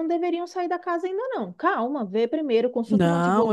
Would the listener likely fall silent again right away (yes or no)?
no